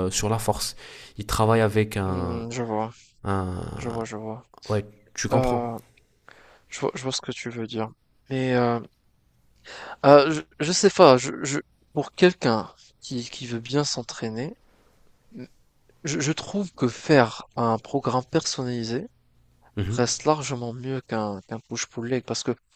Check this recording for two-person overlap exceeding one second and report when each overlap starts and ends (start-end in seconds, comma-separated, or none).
none